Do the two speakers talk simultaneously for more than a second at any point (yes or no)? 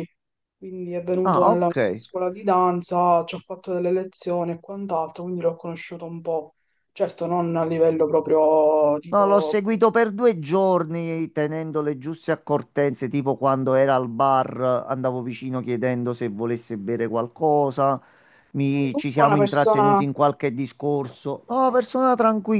yes